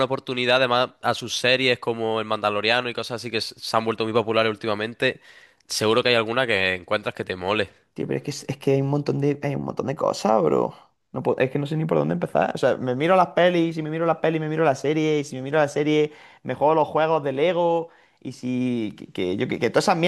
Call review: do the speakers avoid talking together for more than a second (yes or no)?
yes